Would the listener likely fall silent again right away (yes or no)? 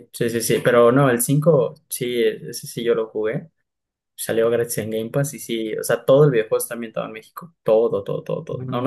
yes